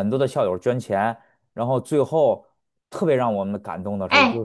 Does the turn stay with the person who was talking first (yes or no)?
no